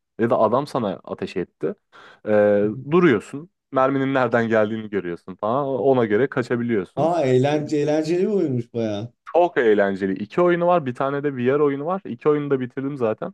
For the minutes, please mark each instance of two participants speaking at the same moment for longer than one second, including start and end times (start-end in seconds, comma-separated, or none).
none